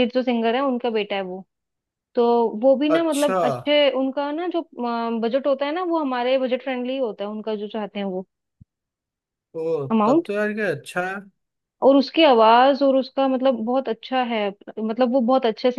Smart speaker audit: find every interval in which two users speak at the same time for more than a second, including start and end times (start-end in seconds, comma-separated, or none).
none